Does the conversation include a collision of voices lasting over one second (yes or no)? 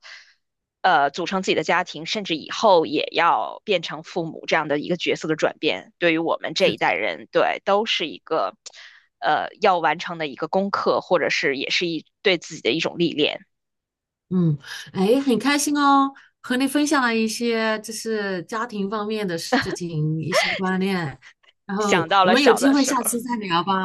yes